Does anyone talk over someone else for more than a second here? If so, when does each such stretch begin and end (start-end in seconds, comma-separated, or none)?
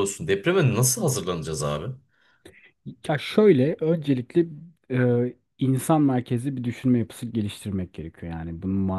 none